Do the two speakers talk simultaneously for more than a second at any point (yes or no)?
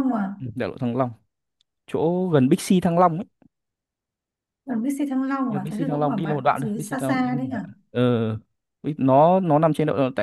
yes